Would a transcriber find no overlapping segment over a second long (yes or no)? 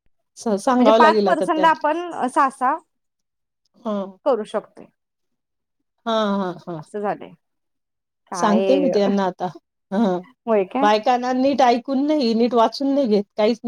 no